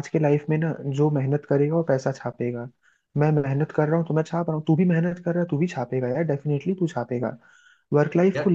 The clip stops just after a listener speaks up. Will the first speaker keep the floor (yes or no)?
yes